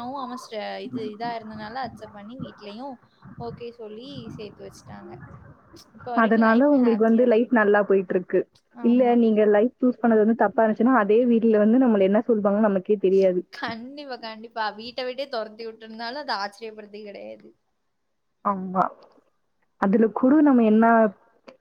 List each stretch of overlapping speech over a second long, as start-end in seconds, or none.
6.2-8.0